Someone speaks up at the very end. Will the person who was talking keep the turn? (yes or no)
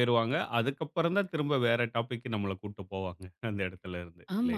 no